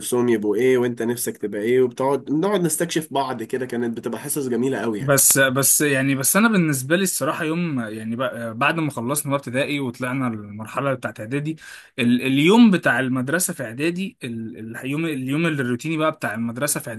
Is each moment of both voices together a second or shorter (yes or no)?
yes